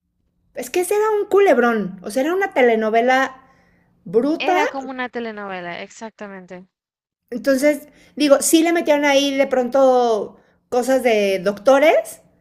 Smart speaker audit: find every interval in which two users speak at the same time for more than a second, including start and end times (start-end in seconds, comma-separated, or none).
none